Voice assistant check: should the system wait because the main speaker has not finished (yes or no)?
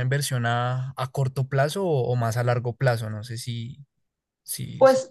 no